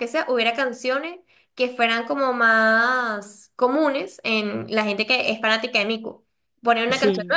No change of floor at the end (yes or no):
yes